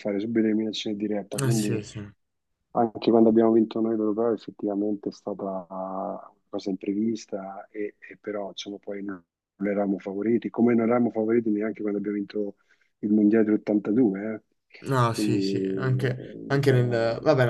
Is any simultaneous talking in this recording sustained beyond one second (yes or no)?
yes